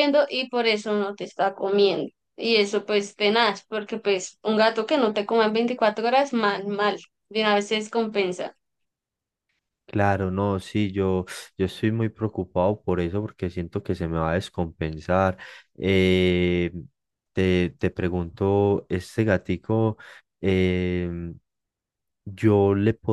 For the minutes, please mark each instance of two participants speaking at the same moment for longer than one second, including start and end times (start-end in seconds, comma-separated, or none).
none